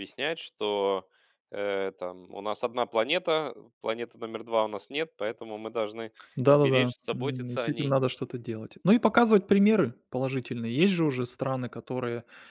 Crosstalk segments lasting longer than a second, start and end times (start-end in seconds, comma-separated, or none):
6.5-8.0